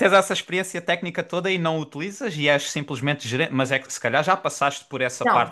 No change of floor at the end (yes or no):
no